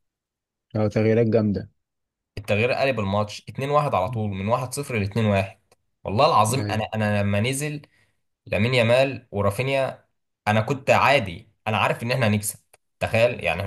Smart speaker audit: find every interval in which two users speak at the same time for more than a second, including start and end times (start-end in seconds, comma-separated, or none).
none